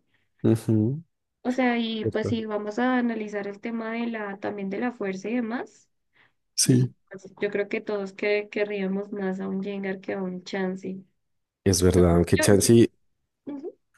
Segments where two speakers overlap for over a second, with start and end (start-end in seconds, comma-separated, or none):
none